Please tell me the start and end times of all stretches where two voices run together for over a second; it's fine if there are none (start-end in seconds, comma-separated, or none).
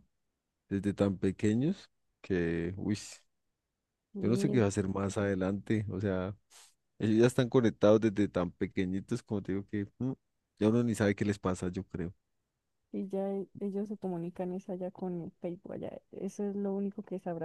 none